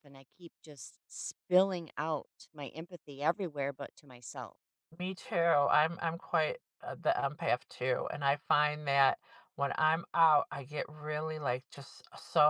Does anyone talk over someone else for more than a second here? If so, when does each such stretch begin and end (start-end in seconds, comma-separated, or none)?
none